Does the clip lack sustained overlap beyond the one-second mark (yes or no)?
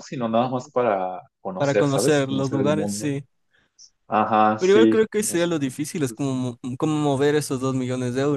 no